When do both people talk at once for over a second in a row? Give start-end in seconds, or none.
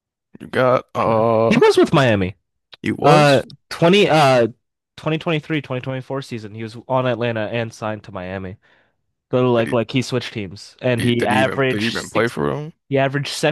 11.0-12.3